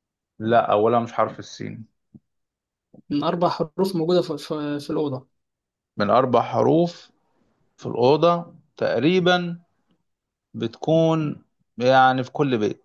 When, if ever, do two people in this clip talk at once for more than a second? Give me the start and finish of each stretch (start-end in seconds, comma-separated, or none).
none